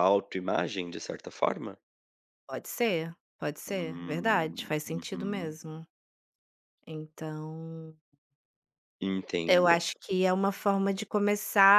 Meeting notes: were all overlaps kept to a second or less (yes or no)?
no